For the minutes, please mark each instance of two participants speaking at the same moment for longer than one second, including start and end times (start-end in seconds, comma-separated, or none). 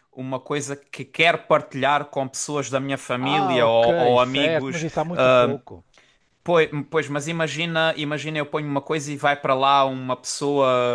3.2-4.8